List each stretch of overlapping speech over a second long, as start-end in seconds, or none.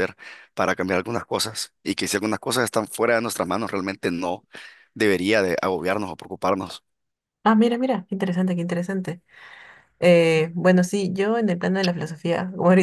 none